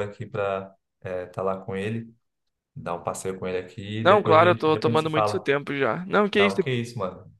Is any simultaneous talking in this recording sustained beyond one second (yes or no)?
yes